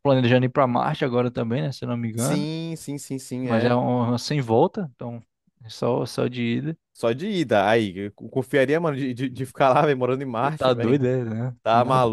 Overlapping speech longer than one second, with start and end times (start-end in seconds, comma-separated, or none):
none